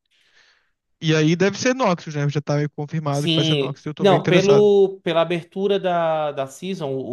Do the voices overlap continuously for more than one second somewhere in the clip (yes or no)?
yes